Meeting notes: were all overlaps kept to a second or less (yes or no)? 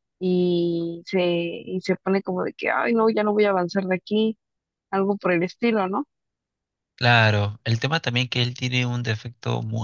yes